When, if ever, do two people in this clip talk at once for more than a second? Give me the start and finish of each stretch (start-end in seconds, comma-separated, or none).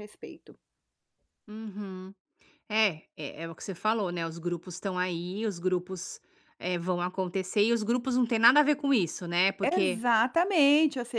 none